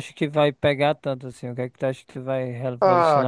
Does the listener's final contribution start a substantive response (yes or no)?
yes